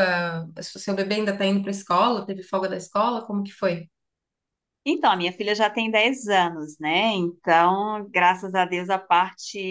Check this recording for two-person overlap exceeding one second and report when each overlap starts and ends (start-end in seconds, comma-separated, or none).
none